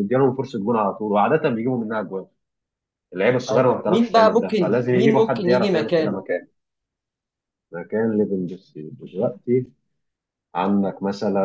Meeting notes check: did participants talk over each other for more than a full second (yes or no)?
yes